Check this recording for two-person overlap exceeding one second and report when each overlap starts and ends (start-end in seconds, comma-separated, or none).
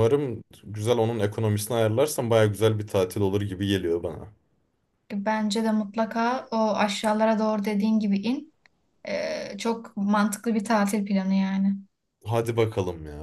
none